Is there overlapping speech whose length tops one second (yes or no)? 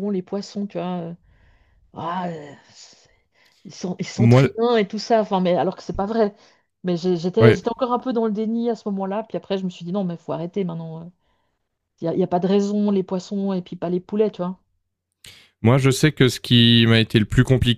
no